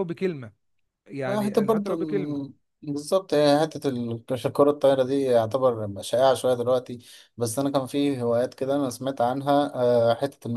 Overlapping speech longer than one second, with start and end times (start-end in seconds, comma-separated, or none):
1.2-2.6